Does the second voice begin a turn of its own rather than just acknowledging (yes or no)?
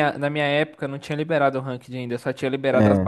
no